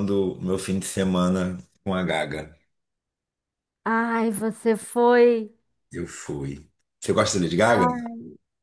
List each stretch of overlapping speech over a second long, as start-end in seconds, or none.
none